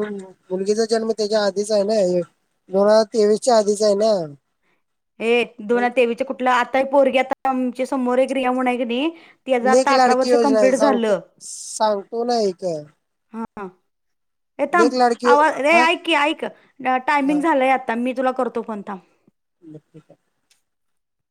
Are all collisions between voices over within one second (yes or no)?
no